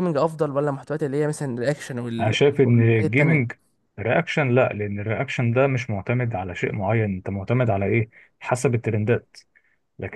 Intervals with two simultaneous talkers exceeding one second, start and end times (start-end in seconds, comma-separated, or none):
2.2-3.5